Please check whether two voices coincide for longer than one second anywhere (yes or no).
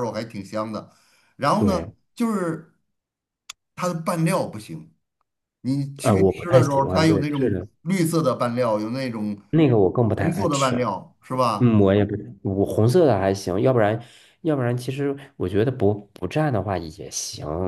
yes